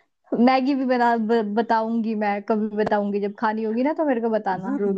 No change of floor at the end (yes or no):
no